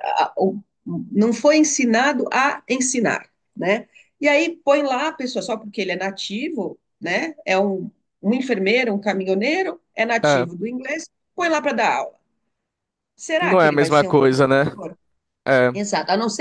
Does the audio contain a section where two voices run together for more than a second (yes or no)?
yes